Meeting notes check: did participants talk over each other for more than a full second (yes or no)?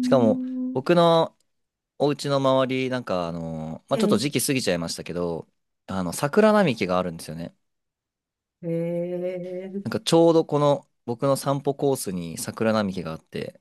no